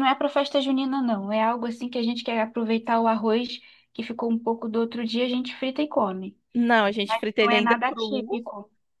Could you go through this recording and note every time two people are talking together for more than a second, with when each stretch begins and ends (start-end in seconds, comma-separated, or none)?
7.0-8.4